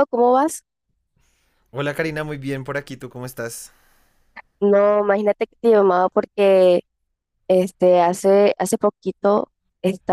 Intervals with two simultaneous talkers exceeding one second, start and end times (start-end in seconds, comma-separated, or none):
none